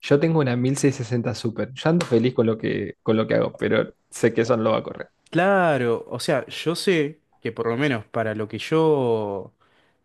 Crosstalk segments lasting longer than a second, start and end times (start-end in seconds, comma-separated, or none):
none